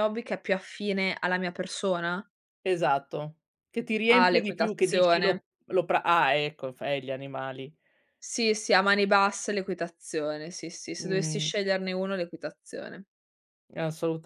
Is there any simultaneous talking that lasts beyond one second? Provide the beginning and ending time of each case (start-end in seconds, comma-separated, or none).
4.1-5.4